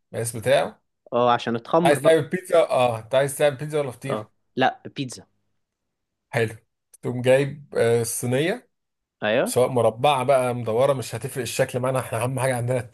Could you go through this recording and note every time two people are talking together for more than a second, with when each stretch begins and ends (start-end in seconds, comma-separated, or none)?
none